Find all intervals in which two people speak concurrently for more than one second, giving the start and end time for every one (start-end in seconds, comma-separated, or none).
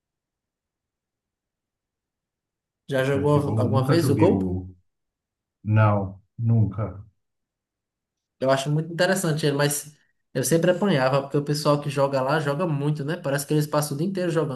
3.1-4.5